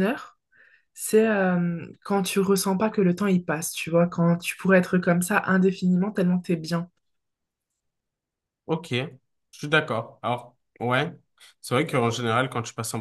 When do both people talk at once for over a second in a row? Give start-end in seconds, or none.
none